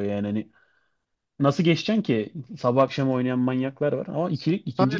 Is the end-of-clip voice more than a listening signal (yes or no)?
yes